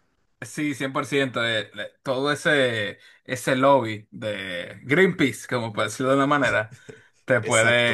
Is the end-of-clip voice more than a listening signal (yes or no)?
no